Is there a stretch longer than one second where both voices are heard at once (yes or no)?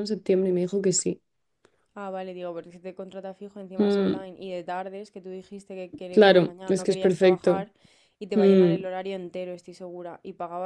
yes